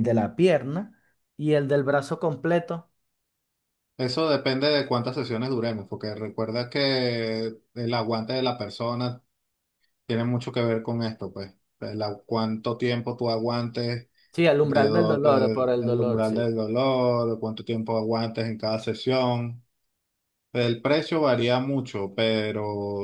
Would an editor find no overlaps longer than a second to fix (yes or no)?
no